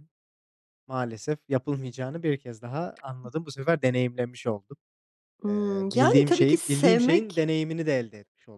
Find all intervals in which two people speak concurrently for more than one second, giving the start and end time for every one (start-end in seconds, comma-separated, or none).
5.5-7.5